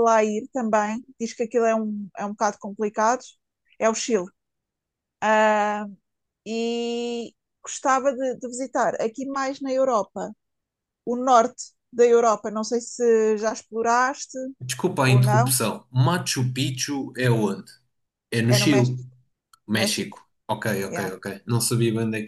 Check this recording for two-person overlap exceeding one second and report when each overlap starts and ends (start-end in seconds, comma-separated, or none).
none